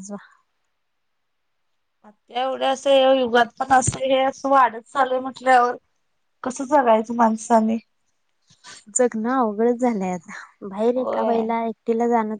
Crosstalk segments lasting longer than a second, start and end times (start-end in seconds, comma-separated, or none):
none